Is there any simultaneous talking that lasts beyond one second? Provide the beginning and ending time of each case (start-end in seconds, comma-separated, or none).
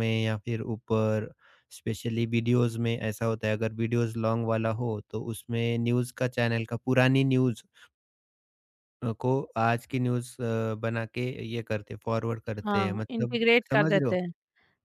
12.6-14.2